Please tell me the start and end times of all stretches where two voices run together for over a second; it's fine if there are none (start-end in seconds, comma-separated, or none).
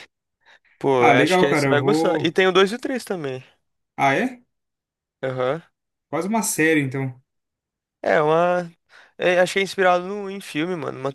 1.0-2.4